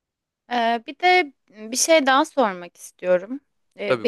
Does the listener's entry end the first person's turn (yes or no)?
no